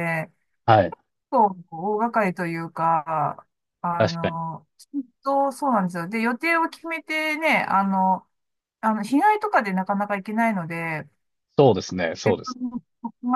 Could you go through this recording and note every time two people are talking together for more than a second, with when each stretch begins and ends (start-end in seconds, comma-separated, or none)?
none